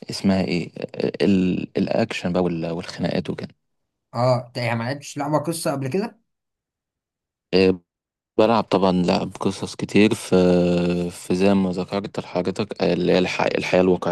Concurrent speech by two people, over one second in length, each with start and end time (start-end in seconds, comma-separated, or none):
none